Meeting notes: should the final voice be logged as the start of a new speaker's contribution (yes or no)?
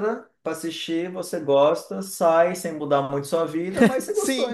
yes